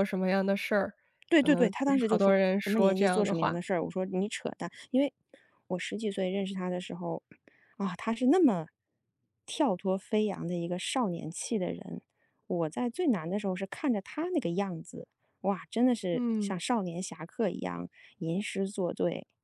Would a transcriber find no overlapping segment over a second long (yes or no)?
no